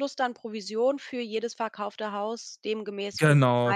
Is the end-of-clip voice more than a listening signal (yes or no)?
yes